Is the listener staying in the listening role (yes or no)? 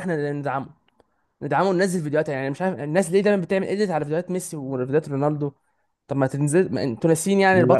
no